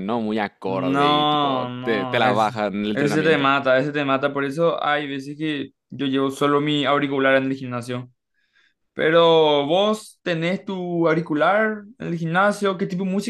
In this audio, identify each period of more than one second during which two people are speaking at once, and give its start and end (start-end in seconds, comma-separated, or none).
0.6-3.5